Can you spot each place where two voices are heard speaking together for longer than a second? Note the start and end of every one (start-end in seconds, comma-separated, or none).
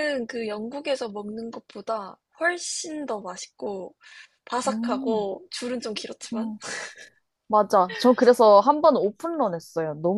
none